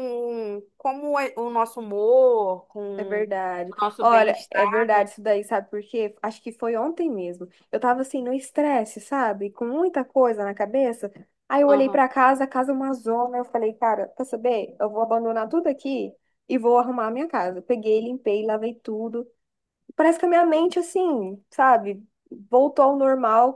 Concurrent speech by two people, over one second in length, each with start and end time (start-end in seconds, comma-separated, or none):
3.0-5.1